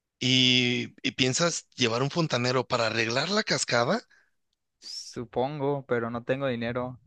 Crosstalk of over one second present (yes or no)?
no